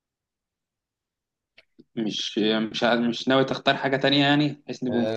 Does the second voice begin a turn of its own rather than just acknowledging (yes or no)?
yes